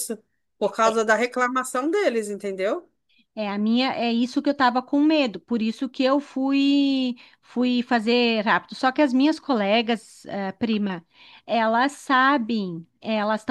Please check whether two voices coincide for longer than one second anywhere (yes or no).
no